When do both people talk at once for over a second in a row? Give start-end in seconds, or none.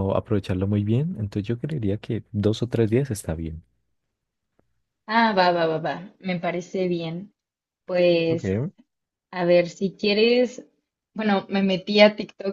none